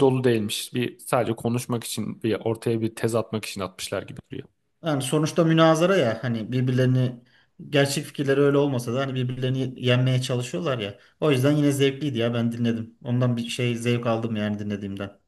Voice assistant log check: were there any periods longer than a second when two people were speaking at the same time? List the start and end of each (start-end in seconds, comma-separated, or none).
none